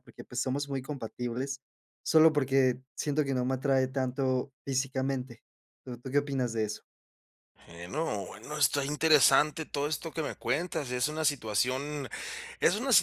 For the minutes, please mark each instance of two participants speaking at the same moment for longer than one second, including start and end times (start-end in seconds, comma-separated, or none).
none